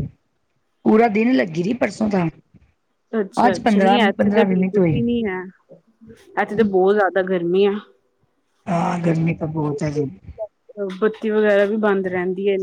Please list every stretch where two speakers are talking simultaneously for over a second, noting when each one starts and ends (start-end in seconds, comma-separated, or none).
3.5-5.0